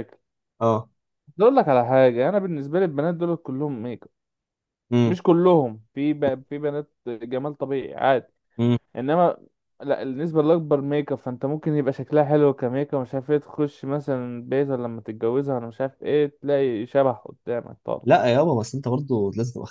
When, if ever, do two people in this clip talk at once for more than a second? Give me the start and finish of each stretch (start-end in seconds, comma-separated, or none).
none